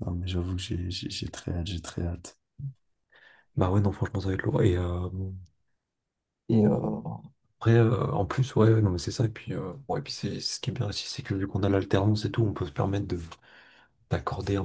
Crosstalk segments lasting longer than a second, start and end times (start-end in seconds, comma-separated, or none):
none